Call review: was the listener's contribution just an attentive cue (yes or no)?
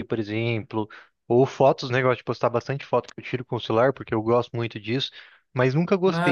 yes